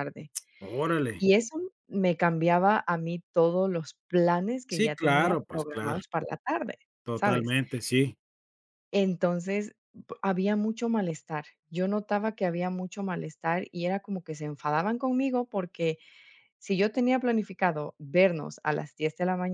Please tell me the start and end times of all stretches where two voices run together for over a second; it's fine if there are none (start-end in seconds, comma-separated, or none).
4.7-6.0